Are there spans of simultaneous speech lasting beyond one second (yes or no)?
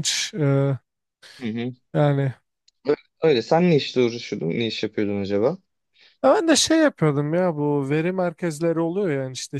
no